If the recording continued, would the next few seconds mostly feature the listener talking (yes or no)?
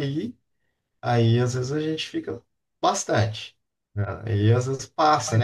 yes